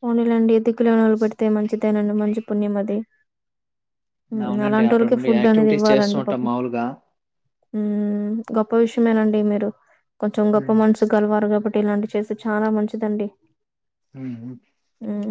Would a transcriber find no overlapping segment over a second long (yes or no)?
no